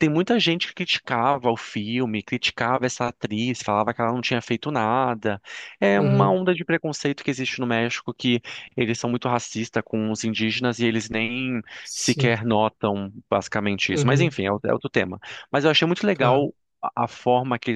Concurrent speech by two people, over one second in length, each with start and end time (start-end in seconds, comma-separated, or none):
none